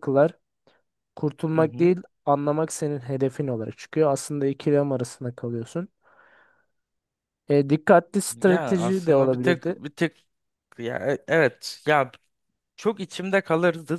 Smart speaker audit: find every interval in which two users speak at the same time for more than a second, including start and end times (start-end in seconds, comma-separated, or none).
8.3-9.7